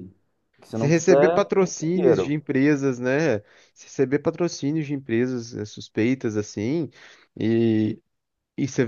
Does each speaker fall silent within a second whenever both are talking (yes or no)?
no